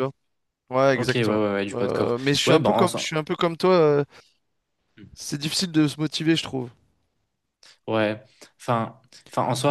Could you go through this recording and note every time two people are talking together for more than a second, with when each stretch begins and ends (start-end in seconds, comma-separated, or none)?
1.0-3.1